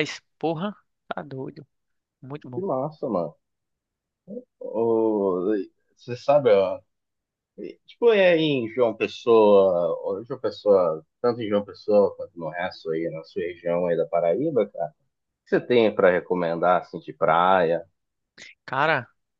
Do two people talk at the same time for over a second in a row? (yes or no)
no